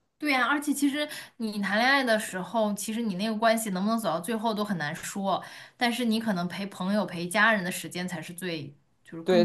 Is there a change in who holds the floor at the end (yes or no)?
yes